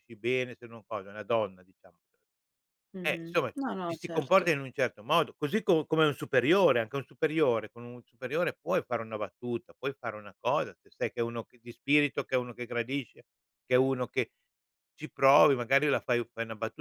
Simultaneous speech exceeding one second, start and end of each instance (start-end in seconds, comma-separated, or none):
3.0-4.5